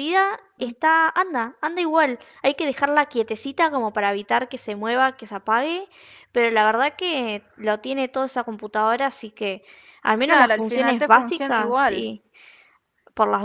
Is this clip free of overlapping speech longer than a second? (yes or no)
no